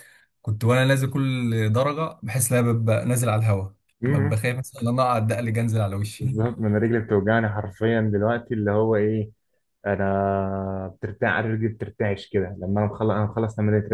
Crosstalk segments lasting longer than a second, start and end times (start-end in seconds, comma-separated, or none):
none